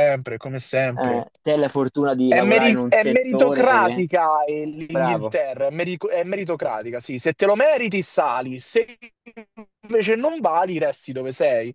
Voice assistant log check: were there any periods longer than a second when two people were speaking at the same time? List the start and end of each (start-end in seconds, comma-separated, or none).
2.3-4.0